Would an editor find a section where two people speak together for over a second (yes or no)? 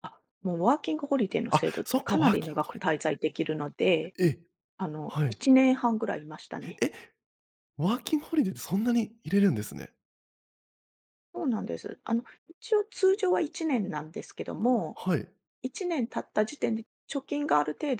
yes